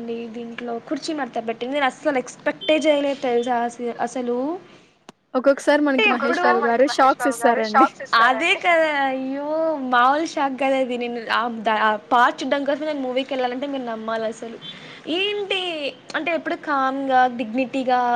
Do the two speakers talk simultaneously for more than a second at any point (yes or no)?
no